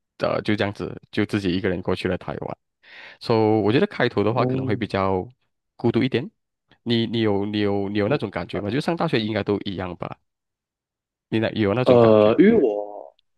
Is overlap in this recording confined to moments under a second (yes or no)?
yes